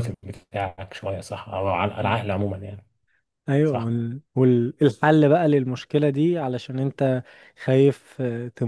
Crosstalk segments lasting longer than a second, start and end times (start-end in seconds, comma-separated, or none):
none